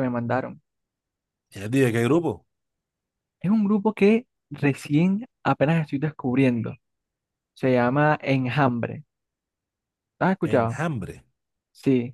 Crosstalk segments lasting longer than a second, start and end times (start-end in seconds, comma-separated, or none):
none